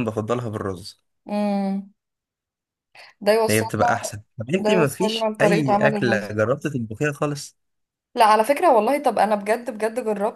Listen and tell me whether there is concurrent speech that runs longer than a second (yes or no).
yes